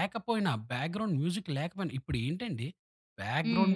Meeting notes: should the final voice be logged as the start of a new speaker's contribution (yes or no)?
no